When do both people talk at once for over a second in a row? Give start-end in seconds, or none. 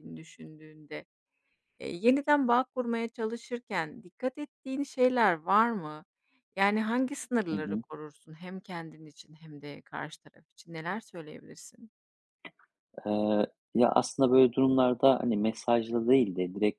none